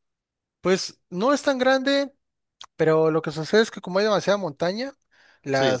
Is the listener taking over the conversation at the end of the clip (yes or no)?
no